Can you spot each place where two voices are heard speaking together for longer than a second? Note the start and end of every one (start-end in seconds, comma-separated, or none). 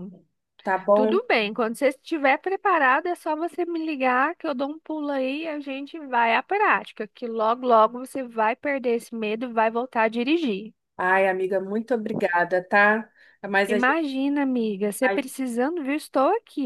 none